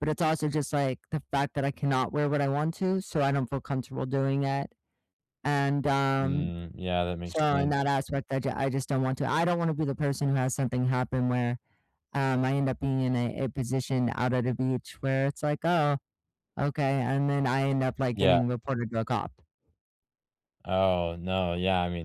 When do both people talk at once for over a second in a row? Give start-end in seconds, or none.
none